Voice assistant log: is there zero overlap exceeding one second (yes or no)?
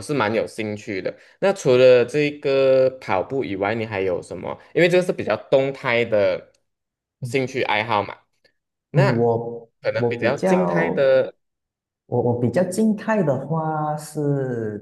no